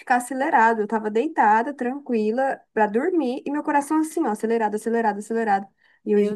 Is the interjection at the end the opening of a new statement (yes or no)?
no